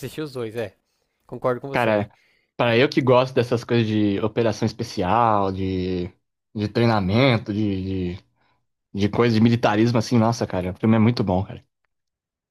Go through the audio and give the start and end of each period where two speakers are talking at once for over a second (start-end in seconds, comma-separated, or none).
none